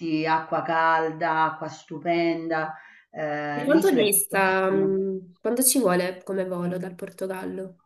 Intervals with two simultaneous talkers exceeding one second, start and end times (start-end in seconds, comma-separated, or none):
3.5-4.9